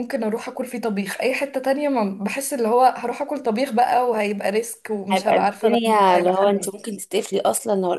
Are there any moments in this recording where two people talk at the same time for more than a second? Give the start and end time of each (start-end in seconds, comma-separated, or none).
5.1-6.5